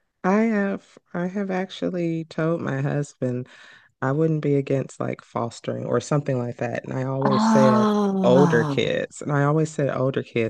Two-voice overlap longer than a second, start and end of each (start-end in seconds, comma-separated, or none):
7.3-8.8